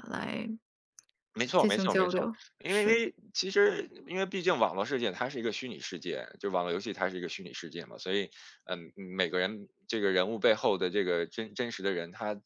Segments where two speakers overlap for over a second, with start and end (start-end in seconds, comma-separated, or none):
1.6-3.0